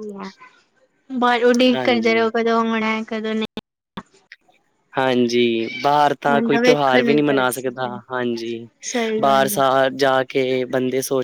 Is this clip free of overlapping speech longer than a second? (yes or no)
no